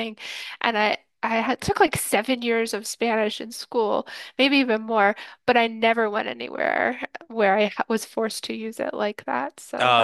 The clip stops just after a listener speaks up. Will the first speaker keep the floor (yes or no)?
no